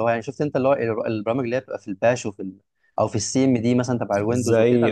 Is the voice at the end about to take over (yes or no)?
yes